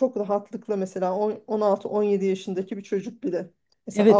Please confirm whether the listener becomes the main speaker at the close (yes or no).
yes